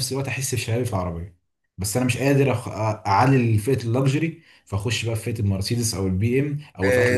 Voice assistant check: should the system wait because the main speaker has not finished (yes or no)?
no